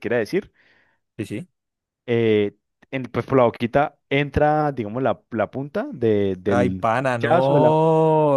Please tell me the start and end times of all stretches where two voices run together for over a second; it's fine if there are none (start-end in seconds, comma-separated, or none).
6.4-7.8